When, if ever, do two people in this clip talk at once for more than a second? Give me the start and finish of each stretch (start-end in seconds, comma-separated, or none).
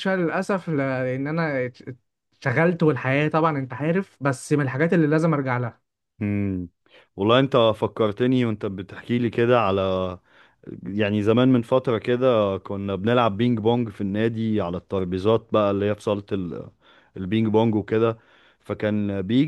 none